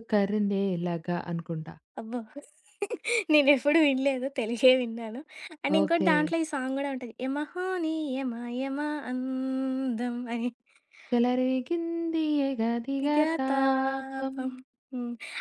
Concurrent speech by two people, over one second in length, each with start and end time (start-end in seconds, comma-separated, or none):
12.8-14.3